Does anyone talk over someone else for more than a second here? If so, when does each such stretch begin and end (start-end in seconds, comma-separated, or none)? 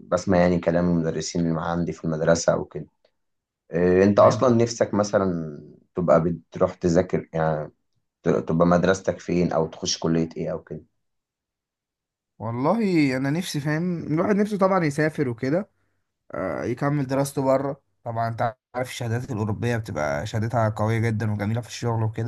none